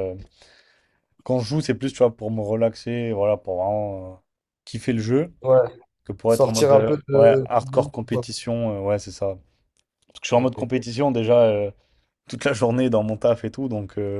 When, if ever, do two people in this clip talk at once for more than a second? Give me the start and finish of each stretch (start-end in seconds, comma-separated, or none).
6.3-8.2